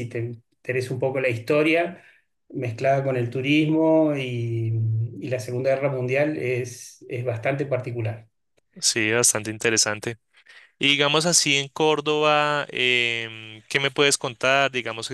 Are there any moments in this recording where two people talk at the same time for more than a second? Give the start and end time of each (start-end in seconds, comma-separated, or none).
none